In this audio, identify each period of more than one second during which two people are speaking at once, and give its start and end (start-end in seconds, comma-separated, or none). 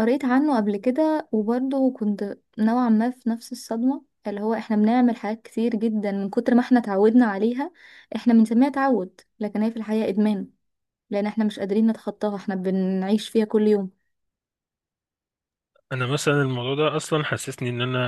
none